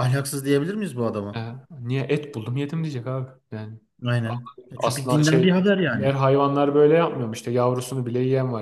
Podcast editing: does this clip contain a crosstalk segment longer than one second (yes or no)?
yes